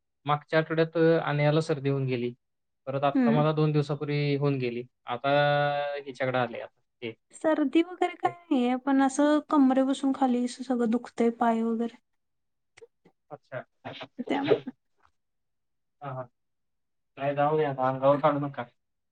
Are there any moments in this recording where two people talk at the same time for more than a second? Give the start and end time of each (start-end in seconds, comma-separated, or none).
none